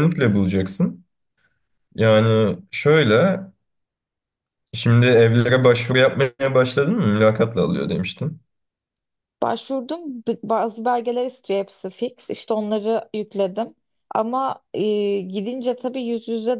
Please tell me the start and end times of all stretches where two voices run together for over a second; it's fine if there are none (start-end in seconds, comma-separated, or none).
none